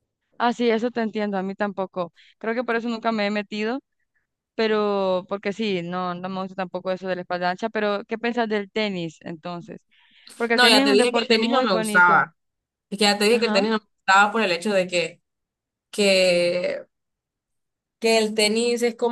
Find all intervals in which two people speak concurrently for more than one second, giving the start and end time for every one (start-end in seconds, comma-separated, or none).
10.5-12.3